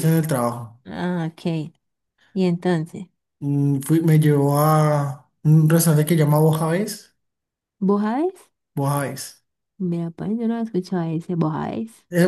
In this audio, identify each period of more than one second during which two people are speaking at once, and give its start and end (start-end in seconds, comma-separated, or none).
none